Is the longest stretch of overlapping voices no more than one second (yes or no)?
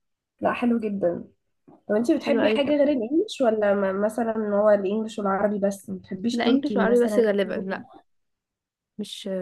no